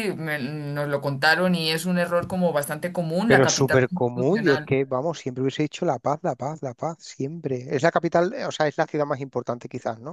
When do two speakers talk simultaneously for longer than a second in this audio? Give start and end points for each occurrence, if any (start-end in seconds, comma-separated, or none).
3.3-4.7